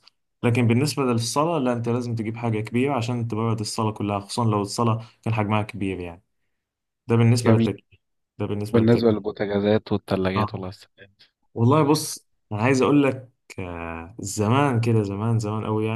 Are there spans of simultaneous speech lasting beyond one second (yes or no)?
no